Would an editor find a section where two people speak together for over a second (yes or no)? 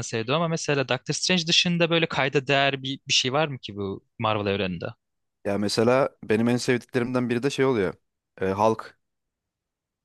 no